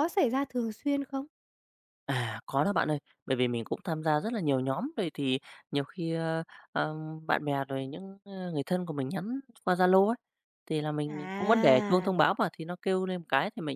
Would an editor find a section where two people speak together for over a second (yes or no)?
yes